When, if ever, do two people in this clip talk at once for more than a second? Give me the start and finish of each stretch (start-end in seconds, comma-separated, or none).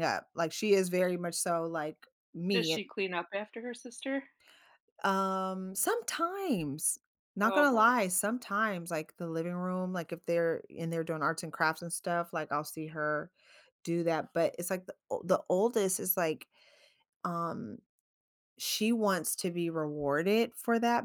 none